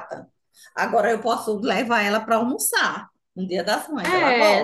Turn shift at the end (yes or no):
yes